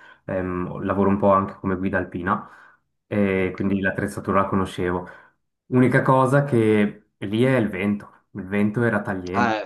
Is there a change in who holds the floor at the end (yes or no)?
no